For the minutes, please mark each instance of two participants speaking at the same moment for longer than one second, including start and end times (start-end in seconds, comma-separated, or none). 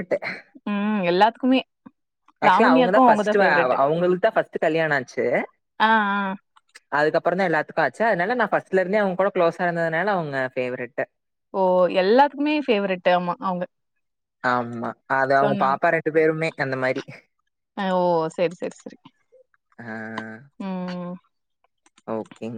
2.5-3.7